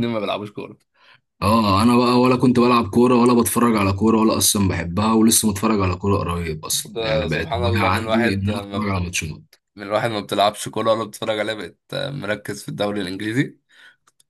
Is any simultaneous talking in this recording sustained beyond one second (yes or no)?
yes